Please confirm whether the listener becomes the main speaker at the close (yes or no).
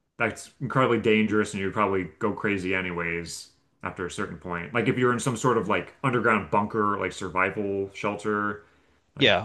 yes